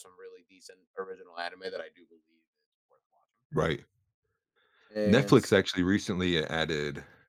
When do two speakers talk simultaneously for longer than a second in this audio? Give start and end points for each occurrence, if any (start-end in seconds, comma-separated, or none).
none